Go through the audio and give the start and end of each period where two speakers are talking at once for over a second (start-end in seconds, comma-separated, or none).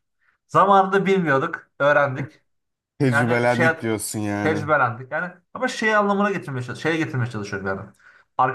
none